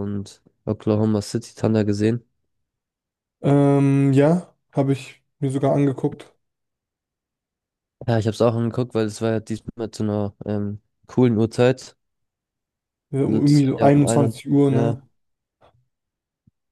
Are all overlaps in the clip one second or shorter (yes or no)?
no